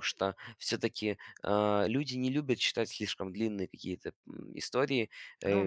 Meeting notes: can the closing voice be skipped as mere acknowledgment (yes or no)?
yes